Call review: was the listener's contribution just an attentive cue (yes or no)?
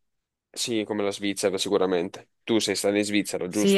no